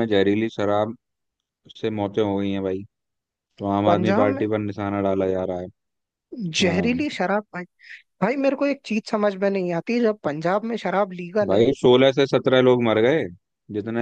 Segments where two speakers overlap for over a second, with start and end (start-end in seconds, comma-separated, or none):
none